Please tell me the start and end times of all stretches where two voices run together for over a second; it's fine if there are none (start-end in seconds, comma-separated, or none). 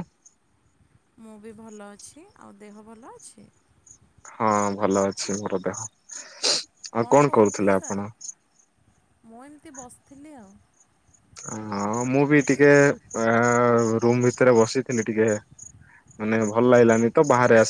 none